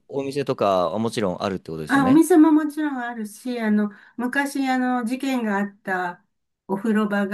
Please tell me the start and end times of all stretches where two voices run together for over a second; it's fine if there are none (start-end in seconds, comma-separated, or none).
none